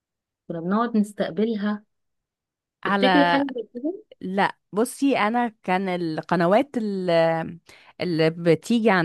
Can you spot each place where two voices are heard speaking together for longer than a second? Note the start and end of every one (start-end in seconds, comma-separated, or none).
none